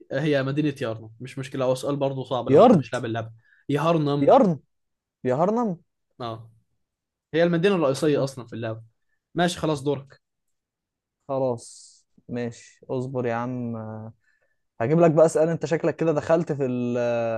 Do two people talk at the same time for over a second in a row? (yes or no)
no